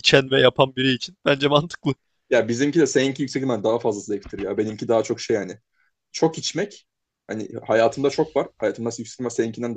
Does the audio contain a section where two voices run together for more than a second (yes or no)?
no